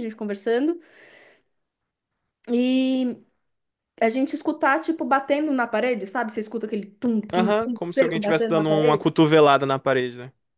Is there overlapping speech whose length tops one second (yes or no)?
yes